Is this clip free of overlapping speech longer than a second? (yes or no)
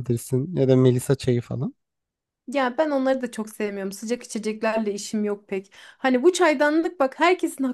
yes